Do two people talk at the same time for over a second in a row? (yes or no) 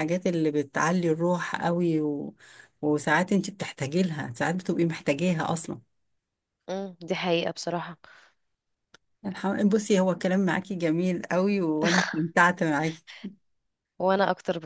no